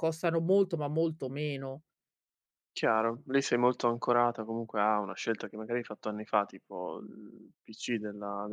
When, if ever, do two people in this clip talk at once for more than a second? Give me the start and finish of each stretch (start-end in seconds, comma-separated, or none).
none